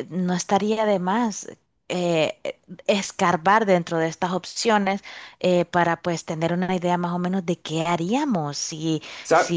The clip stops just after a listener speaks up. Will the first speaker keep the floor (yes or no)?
yes